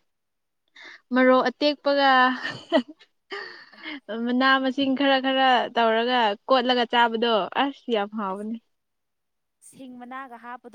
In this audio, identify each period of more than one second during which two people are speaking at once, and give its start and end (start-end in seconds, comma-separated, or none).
none